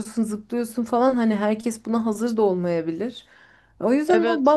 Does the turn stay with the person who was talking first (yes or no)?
yes